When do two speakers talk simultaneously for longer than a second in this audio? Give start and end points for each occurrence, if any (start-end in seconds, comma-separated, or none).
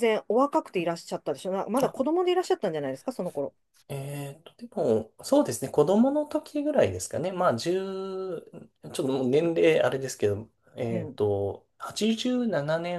none